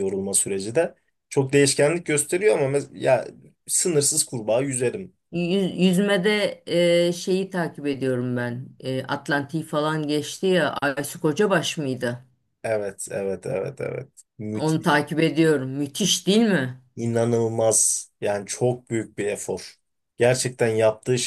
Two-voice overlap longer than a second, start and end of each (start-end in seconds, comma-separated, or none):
none